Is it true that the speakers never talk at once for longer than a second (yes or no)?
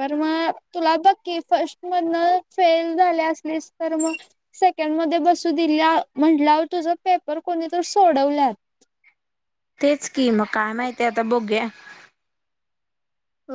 yes